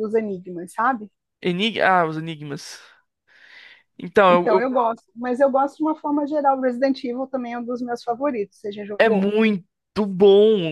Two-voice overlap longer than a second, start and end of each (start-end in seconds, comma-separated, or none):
none